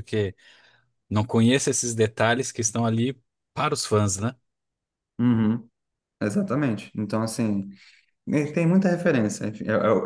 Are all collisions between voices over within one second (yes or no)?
yes